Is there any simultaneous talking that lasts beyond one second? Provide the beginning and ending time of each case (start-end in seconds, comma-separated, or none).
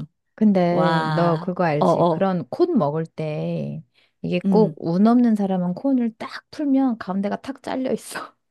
0.7-2.2